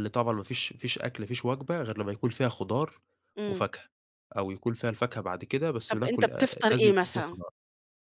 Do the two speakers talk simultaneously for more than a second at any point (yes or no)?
yes